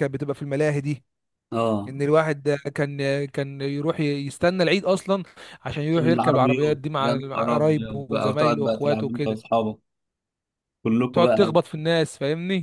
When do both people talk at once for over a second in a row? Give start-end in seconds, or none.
5.9-9.4